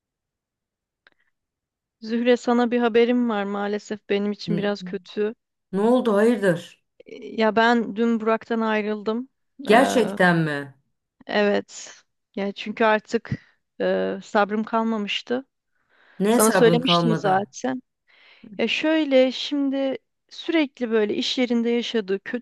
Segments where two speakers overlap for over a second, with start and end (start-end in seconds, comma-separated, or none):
16.3-17.5